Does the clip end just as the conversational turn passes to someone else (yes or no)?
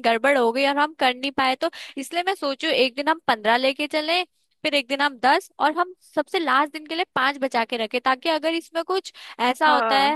no